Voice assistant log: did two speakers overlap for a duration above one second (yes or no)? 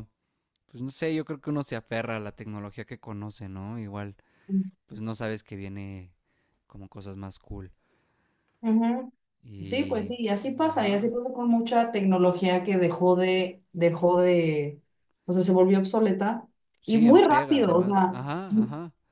yes